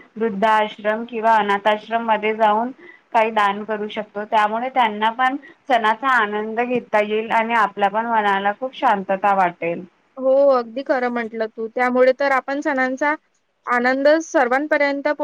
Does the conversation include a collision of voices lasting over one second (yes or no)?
no